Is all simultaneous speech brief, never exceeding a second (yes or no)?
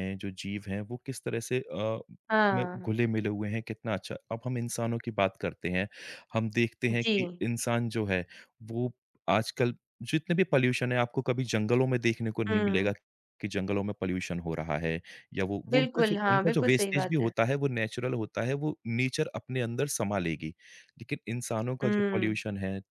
no